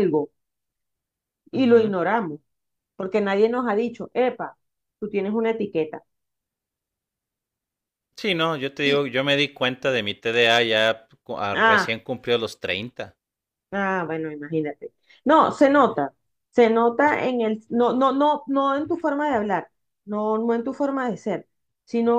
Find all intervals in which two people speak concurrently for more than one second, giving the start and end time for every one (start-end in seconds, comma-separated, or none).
none